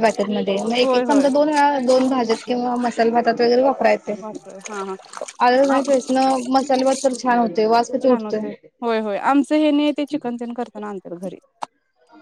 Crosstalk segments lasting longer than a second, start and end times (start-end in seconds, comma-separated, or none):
none